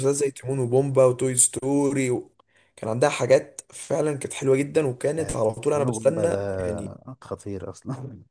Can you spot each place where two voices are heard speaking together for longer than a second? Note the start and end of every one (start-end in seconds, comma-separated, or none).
5.2-6.9